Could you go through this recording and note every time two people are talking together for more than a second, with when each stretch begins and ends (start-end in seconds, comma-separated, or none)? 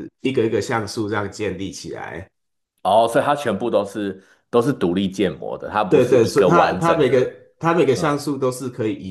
5.9-7.3